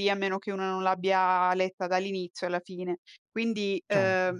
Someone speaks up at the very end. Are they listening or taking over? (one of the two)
listening